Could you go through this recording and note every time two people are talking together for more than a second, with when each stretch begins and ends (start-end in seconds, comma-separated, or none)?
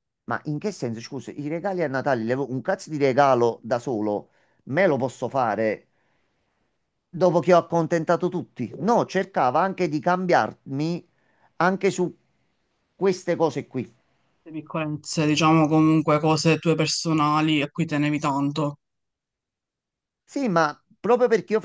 none